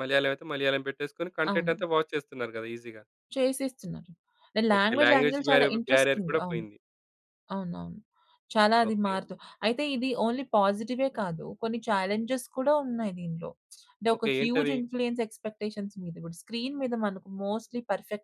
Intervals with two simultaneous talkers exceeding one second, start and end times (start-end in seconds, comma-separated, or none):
4.8-6.6